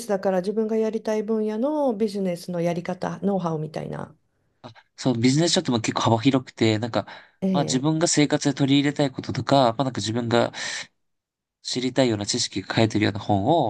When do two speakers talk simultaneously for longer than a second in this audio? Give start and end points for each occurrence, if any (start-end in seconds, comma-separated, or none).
none